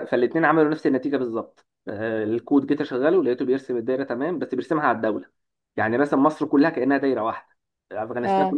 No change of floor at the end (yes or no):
yes